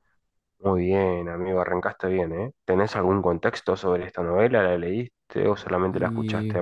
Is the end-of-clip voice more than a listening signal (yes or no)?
yes